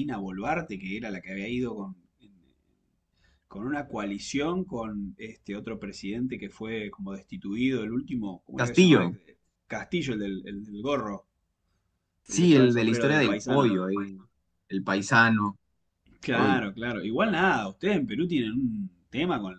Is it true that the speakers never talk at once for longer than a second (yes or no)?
no